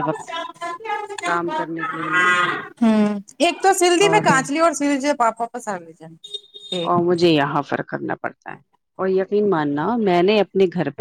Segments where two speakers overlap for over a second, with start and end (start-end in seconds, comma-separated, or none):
none